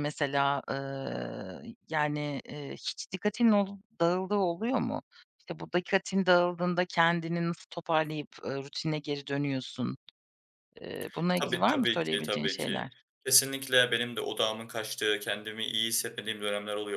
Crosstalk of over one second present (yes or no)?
yes